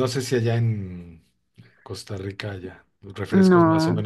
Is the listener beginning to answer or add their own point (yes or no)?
no